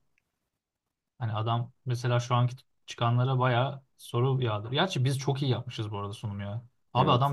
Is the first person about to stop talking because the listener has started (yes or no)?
no